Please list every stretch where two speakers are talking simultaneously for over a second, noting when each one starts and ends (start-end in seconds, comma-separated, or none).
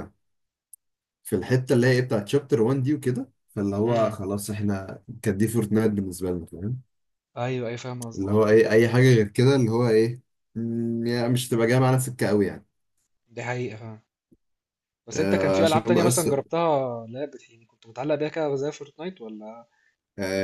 15.1-16.4